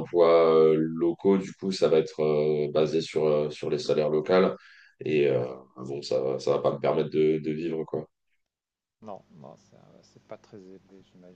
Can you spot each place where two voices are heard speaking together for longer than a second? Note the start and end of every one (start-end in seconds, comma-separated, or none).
none